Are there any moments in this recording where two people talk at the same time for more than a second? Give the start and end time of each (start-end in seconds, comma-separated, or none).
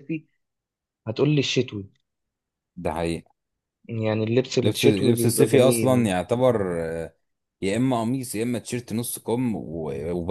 4.6-6.1